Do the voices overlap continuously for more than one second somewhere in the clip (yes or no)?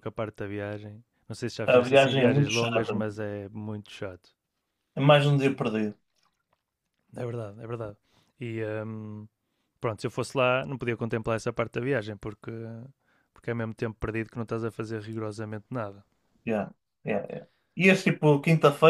yes